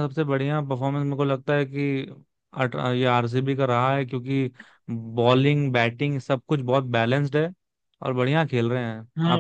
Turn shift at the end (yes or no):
yes